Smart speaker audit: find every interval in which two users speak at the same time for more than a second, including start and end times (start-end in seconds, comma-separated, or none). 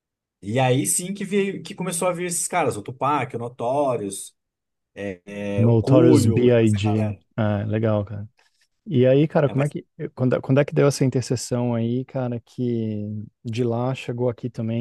5.6-7.2